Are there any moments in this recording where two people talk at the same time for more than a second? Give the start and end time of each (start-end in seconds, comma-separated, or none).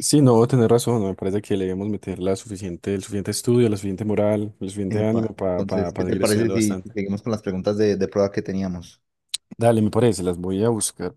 4.9-7.0